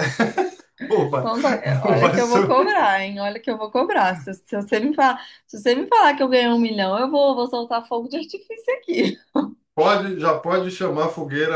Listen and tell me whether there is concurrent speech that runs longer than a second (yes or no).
yes